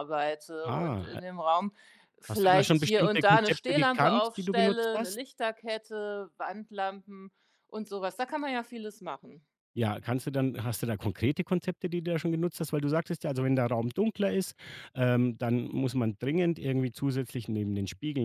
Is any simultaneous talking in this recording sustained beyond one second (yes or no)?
yes